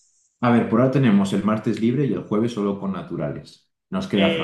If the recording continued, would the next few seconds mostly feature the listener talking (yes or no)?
yes